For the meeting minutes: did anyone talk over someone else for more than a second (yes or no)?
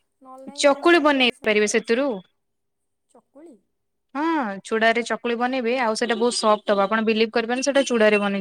yes